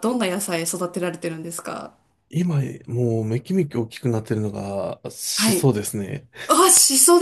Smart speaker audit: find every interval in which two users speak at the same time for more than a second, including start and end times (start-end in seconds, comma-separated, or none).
none